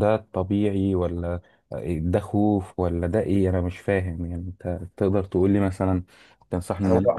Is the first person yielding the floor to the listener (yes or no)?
yes